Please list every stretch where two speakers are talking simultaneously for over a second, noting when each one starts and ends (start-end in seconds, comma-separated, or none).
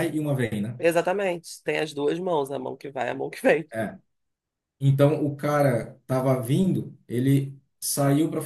none